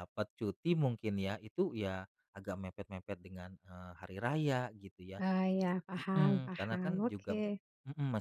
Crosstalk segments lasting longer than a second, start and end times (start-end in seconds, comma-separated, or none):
6.0-7.3